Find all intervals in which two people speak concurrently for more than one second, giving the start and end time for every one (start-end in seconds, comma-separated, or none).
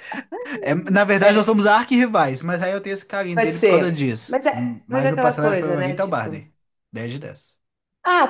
3.3-6.3